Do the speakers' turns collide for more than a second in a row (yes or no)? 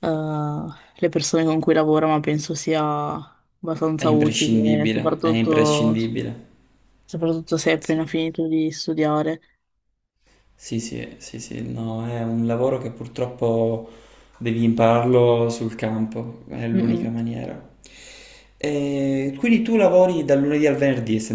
yes